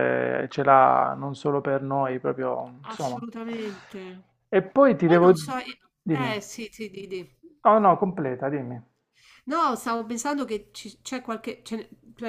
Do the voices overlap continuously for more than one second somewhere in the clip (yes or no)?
no